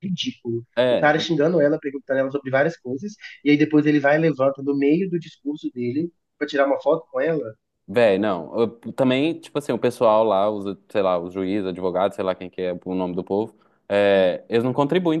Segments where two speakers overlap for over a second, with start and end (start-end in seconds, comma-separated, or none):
none